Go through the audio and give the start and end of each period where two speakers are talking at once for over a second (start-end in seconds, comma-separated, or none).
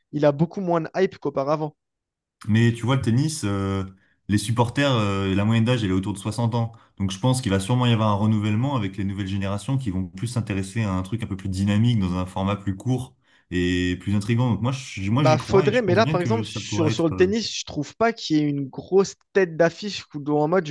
15.2-17.4